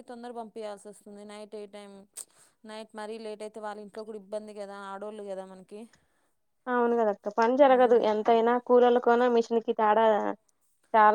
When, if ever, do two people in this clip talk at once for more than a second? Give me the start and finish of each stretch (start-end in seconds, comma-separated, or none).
none